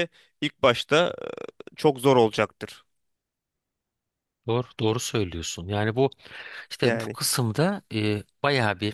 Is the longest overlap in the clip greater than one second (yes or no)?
no